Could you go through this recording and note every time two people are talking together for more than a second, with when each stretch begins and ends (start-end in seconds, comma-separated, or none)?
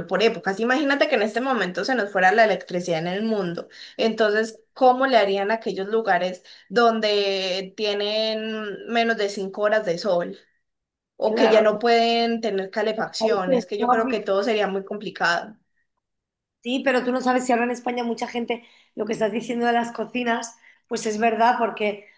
12.9-14.4